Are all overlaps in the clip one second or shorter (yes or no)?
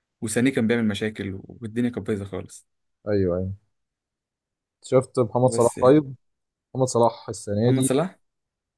yes